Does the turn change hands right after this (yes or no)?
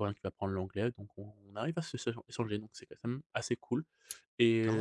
yes